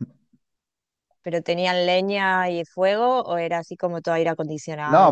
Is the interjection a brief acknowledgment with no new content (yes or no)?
no